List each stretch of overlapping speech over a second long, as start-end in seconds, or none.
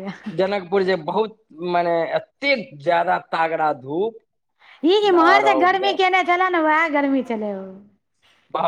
none